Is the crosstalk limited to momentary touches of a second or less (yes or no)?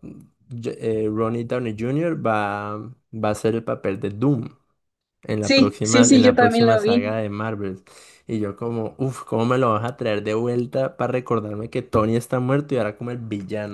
no